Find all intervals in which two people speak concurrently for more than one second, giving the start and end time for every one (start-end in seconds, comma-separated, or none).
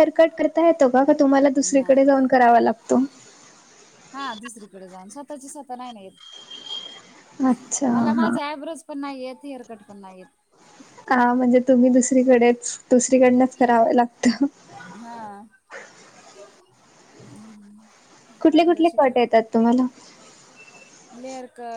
none